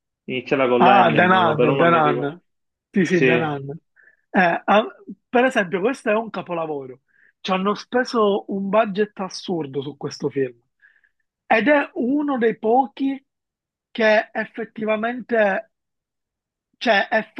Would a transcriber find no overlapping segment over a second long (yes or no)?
no